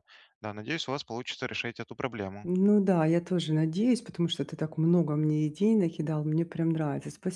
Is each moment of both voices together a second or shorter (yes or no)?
yes